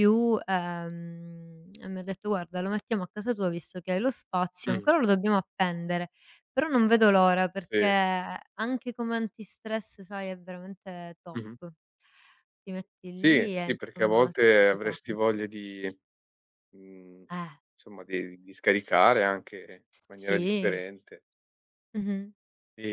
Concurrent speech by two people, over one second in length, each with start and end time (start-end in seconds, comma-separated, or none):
13.1-15.2